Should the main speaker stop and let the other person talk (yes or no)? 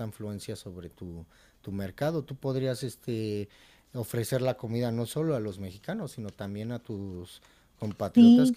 yes